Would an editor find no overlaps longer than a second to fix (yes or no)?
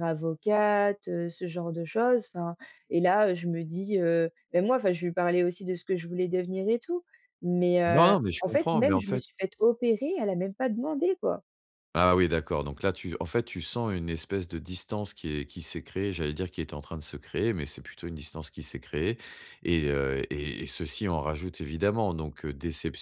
no